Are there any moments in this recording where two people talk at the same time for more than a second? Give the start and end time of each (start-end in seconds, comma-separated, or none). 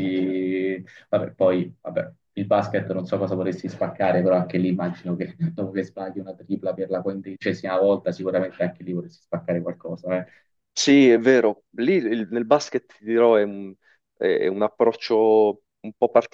none